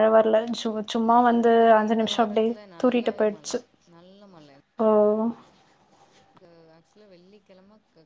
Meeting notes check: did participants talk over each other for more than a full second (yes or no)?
yes